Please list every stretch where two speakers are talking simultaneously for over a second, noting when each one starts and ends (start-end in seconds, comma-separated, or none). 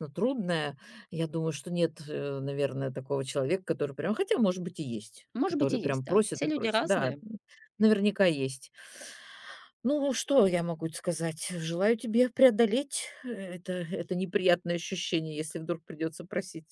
5.3-7.2